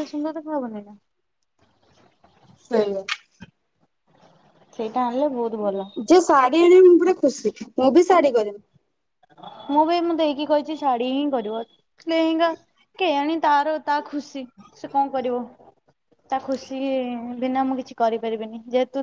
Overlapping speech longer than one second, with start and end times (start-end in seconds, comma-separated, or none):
none